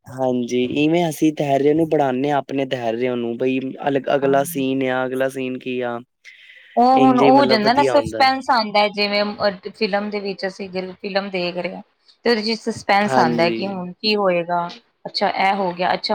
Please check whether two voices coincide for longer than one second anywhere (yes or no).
yes